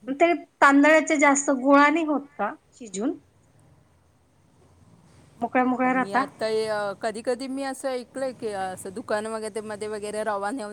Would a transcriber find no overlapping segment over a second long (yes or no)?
yes